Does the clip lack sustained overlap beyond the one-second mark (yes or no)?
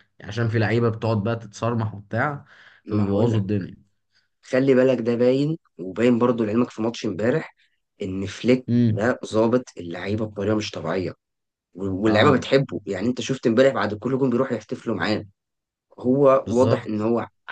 yes